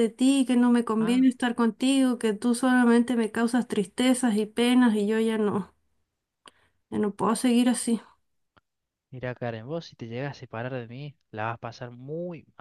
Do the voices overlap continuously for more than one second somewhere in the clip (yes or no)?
no